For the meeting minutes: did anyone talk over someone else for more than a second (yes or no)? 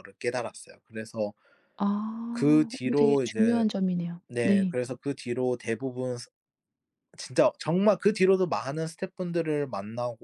yes